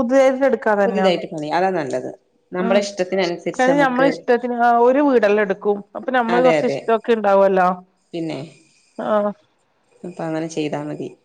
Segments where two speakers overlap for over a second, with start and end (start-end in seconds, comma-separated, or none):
none